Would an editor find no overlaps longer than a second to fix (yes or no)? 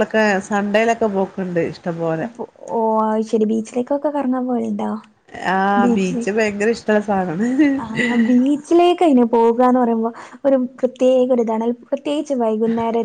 yes